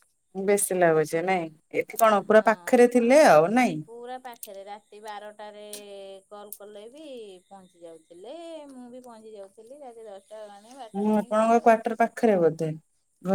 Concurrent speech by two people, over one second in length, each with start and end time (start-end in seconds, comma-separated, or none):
none